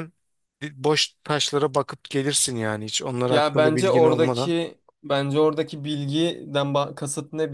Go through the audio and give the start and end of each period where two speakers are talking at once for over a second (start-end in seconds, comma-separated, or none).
3.3-4.5